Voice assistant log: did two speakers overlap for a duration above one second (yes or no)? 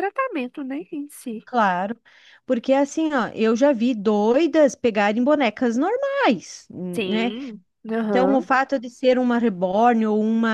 no